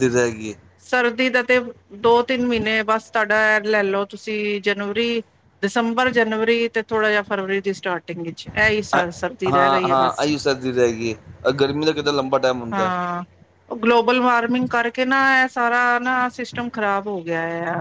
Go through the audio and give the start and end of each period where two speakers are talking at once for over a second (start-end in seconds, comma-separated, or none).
8.9-10.2